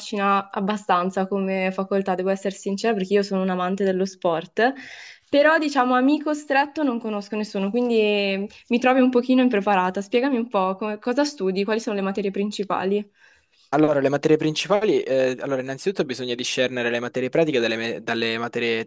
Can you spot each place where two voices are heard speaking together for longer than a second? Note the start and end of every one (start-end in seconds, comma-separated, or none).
none